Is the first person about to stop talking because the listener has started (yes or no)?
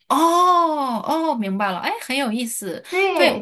yes